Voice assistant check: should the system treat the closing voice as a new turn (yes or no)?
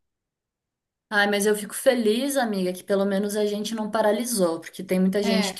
no